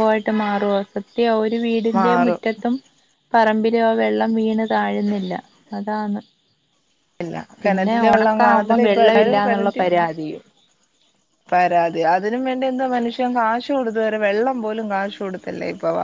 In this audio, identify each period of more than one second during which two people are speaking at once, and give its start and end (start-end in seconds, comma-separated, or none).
7.6-9.8